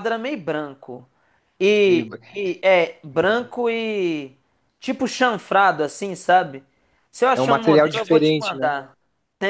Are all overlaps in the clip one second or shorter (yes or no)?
no